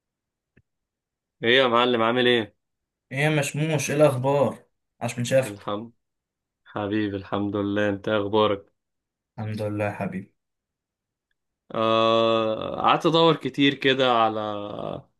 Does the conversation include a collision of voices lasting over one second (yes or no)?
no